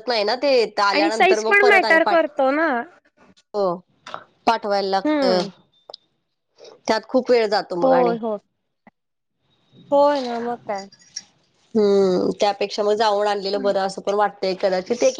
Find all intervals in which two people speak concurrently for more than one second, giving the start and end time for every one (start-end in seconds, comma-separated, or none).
0.9-2.3